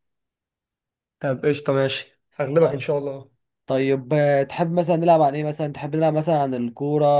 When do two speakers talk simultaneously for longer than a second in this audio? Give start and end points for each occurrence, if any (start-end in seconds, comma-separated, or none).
none